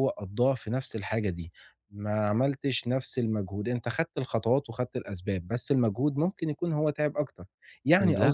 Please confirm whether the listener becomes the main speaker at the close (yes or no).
no